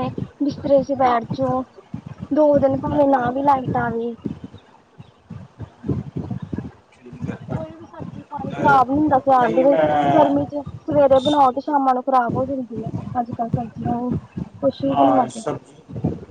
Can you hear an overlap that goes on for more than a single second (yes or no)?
yes